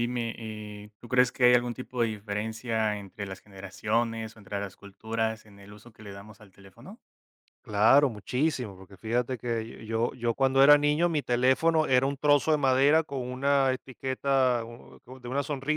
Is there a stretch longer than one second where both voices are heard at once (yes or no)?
no